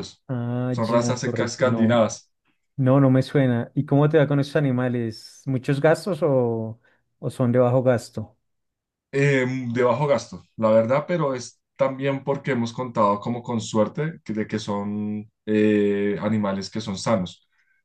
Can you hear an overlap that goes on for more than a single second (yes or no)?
yes